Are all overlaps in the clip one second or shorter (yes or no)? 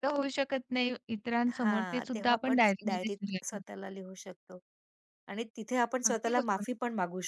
no